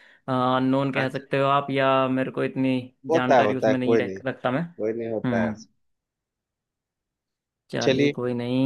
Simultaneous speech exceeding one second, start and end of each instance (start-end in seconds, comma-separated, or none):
3.1-4.6